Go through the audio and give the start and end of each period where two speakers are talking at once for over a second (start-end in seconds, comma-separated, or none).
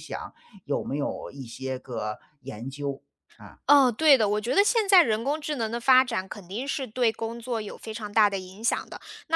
none